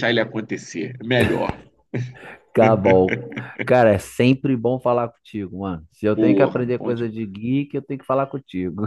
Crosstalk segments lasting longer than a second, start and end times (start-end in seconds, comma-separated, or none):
6.1-7.3